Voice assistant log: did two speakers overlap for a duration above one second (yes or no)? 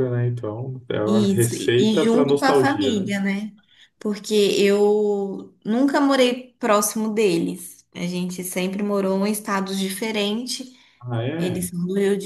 yes